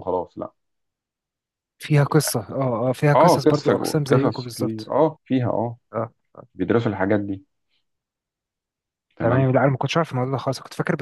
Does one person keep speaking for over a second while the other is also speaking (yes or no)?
yes